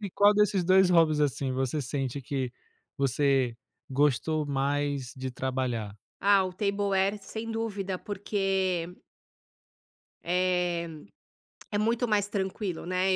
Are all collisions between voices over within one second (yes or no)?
yes